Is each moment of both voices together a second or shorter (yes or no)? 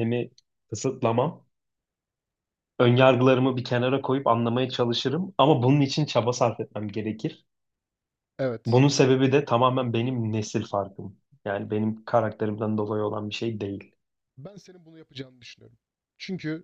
yes